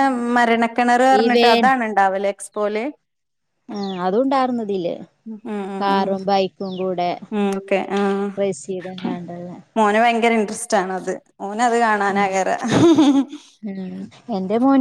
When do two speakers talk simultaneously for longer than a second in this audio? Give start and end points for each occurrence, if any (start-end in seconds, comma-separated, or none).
none